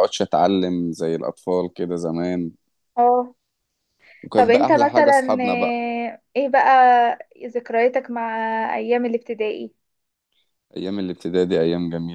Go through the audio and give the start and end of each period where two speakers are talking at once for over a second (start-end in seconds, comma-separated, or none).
4.4-5.8